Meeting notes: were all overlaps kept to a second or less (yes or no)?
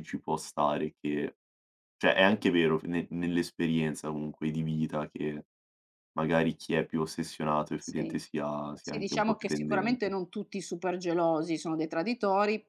no